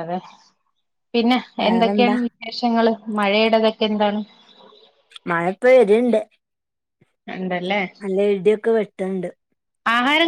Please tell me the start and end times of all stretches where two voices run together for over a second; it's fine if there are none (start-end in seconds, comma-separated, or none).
none